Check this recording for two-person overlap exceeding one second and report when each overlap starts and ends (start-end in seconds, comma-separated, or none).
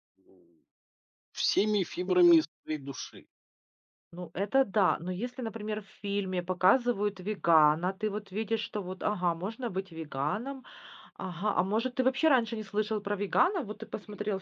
none